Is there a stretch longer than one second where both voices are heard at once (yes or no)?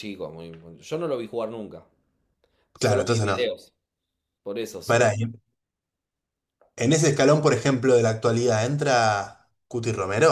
no